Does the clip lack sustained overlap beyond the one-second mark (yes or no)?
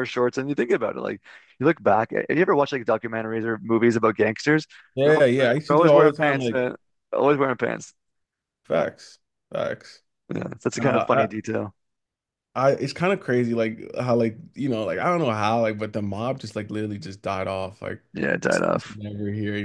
no